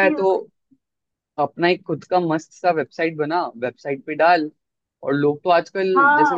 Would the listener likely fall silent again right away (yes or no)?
no